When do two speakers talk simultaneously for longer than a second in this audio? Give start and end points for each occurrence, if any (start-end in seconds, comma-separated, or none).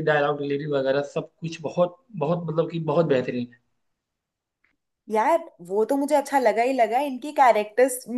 none